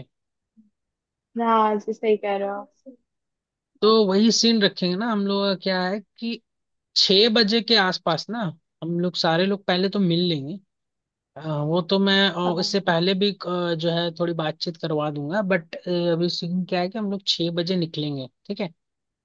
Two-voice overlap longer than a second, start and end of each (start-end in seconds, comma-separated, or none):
none